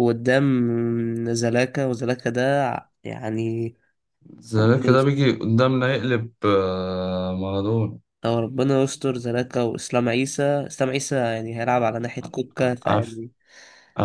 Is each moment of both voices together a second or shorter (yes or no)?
yes